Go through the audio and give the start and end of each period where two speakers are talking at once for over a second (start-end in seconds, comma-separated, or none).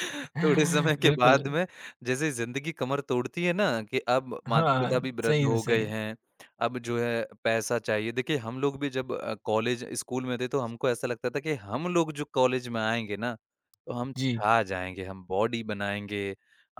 4.5-5.9